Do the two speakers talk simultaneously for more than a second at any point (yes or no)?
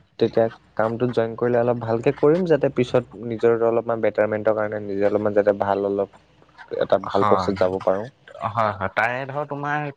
no